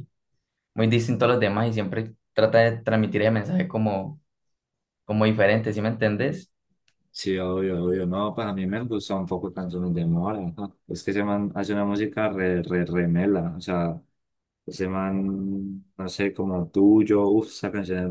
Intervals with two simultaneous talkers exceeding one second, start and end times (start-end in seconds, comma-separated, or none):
none